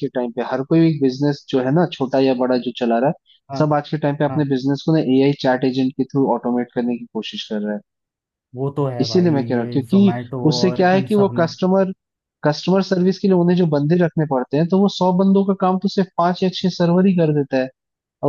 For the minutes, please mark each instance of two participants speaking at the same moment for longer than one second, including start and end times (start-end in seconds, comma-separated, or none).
9.0-11.5